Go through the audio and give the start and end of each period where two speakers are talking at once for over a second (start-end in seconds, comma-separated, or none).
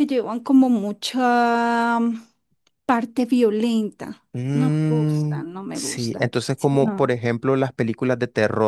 4.3-7.2